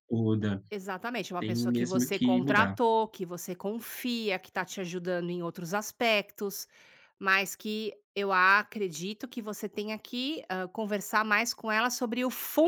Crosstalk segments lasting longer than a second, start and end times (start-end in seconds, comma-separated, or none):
1.4-2.8